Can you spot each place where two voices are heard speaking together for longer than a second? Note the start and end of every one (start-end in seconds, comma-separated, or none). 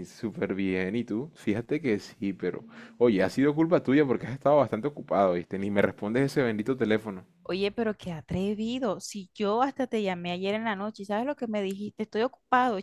none